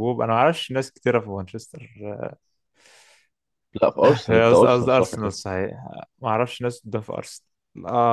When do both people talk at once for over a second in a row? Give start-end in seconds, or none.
4.0-5.3